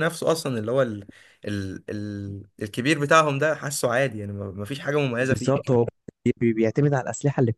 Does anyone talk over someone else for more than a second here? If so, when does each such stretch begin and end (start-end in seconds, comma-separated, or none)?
none